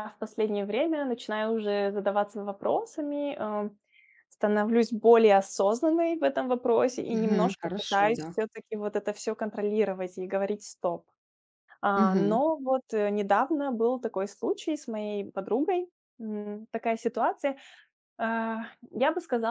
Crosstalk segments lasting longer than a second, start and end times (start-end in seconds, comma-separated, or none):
7.1-8.3